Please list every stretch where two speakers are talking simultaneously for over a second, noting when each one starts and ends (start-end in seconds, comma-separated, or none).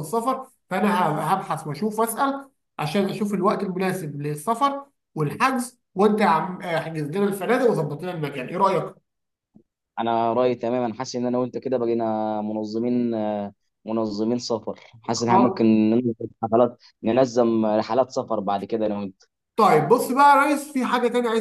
none